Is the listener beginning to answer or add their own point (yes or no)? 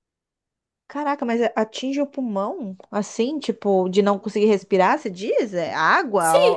yes